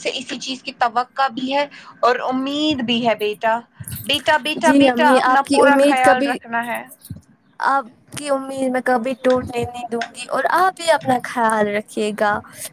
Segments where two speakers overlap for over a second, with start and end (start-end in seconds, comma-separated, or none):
4.7-6.3